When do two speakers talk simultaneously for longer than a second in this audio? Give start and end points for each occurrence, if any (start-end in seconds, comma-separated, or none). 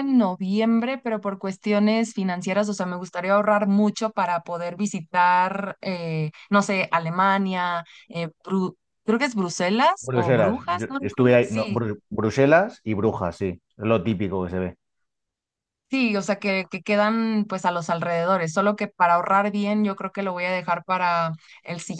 10.0-11.8